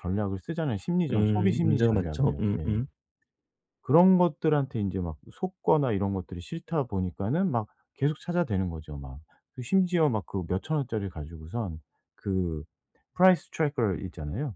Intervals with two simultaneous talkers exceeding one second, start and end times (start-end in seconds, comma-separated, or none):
1.1-2.7